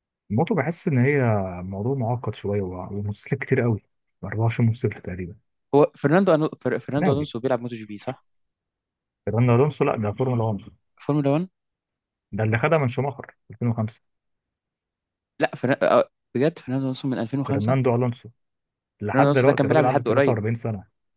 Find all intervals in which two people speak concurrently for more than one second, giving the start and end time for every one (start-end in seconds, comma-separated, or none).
19.1-20.4